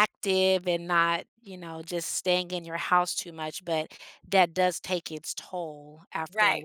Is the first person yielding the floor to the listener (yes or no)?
yes